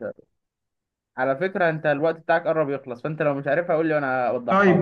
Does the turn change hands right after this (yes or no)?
yes